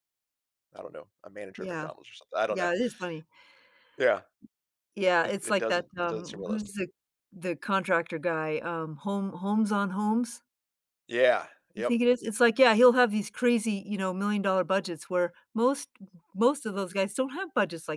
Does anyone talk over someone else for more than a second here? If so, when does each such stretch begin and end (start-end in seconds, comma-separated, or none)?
5.2-6.7